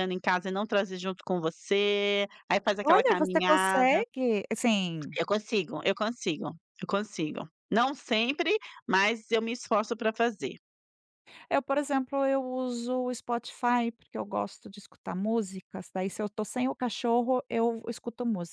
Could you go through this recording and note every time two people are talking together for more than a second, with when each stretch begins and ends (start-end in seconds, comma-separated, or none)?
2.8-4.0